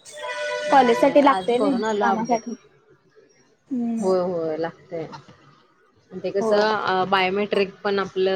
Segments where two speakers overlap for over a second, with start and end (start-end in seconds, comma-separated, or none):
1.0-2.4